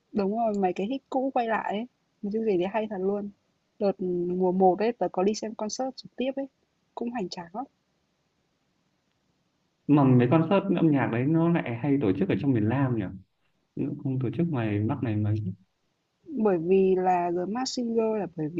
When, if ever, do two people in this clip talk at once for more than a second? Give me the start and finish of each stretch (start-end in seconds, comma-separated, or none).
none